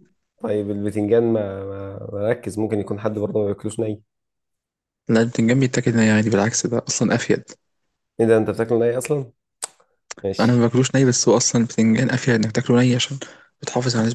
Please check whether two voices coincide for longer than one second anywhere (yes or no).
no